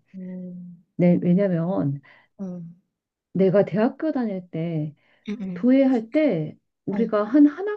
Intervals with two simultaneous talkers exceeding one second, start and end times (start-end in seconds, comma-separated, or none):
none